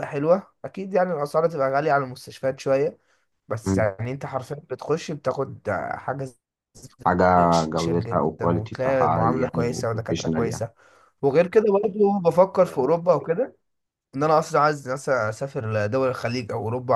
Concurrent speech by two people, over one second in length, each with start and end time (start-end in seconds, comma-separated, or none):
7.7-10.6